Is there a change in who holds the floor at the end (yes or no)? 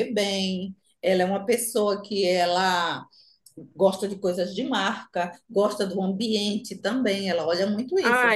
yes